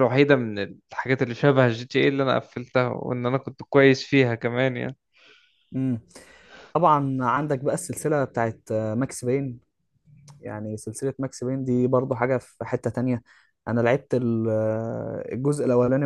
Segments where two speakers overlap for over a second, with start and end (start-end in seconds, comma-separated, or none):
none